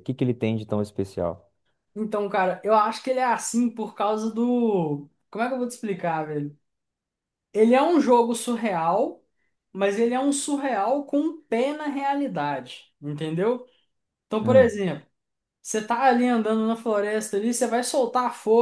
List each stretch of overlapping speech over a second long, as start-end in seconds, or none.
none